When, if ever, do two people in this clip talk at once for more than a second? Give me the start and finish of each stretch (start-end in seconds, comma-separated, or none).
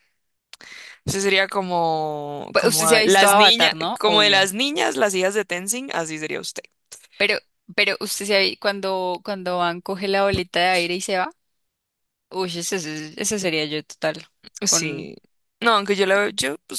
2.5-4.5